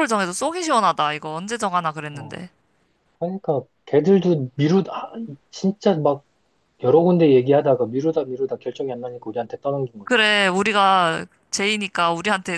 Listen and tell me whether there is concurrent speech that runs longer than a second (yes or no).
no